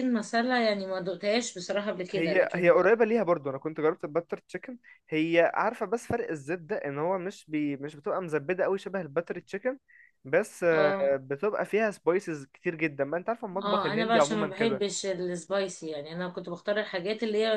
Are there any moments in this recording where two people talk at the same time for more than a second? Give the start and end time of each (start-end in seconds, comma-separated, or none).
13.6-14.8